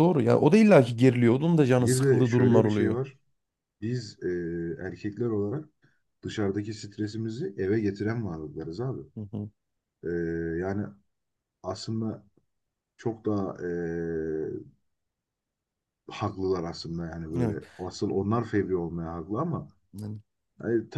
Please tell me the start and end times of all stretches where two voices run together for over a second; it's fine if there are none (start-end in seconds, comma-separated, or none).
1.8-3.0